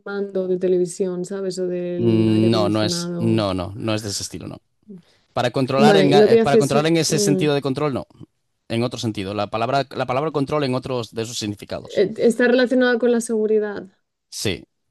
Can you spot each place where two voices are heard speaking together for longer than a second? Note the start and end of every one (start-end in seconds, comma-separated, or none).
2.0-3.5, 5.8-7.4